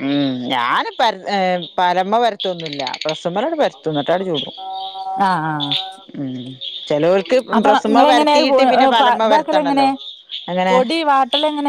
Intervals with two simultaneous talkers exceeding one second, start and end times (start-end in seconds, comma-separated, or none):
7.6-9.9